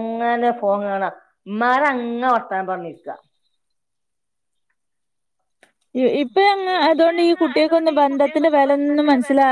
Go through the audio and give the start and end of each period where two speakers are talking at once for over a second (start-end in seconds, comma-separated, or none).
none